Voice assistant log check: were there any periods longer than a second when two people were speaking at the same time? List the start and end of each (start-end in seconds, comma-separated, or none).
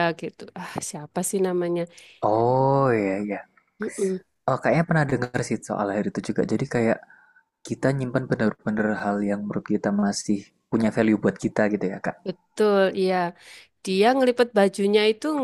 none